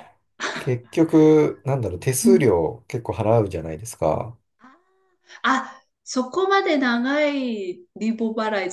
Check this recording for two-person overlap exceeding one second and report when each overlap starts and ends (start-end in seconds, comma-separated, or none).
none